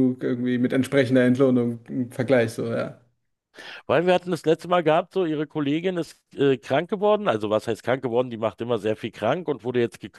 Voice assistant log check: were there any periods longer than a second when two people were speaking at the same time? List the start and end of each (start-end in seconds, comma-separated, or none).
none